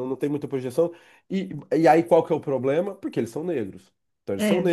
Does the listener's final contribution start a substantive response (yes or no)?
no